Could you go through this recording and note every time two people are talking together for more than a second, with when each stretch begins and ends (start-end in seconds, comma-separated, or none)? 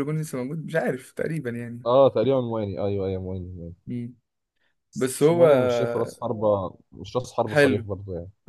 none